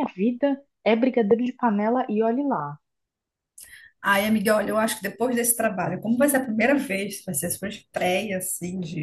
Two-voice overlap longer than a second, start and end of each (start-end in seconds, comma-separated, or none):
none